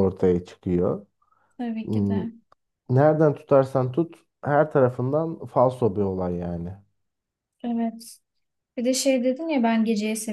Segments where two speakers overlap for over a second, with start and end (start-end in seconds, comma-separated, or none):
none